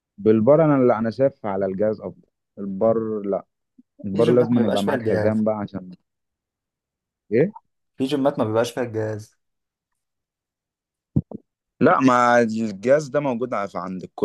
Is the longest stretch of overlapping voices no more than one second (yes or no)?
no